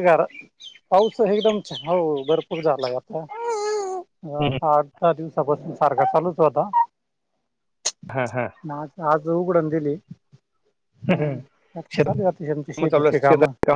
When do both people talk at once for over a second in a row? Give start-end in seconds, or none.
12.0-13.2